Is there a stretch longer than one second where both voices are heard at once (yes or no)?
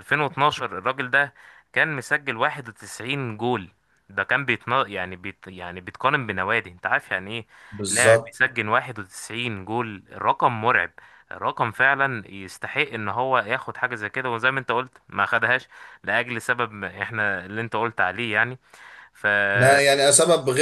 no